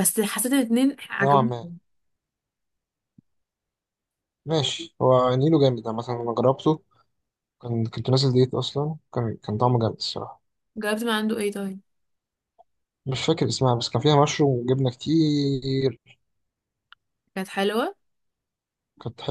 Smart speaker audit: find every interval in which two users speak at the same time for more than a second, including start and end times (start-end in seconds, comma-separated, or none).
none